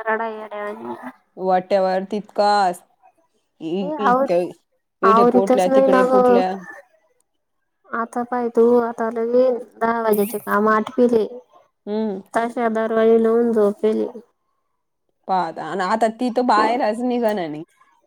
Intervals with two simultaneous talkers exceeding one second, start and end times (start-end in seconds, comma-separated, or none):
5.1-6.4